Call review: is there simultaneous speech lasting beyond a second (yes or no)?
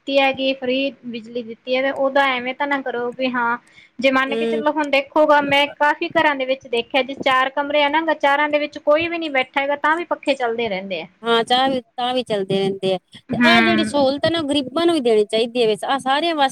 no